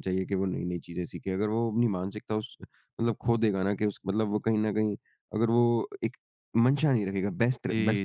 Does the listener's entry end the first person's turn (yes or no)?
no